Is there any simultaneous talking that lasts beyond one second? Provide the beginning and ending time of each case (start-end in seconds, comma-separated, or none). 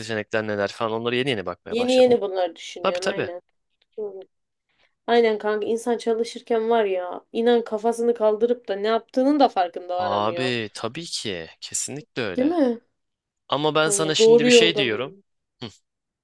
13.8-15.2